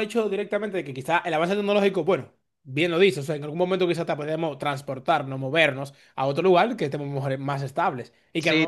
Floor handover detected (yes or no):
yes